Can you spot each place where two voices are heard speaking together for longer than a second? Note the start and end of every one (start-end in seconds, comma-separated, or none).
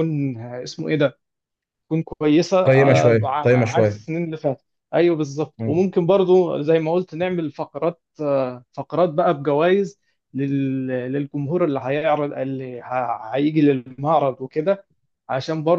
2.7-4.0